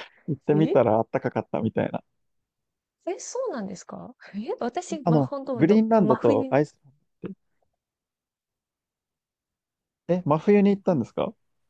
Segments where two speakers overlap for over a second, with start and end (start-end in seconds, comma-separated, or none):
5.0-6.6